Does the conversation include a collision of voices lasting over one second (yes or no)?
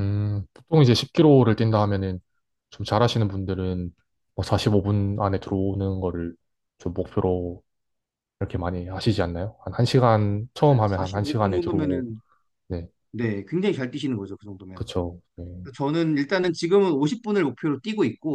yes